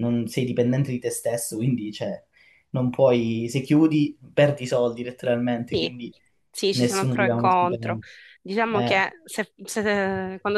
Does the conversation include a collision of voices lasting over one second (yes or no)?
yes